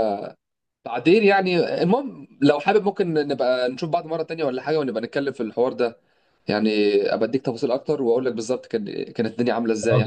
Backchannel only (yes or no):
no